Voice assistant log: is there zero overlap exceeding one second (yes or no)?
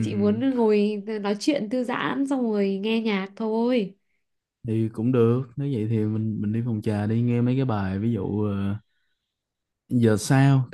yes